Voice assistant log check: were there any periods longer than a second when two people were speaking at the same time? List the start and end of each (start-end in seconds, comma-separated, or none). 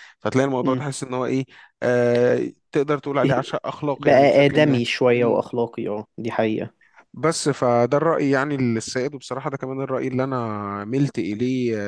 4.0-5.4